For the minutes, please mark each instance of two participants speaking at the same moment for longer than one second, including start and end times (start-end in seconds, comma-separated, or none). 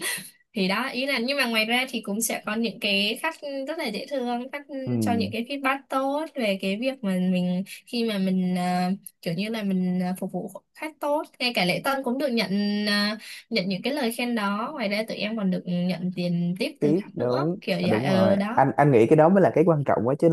16.8-18.6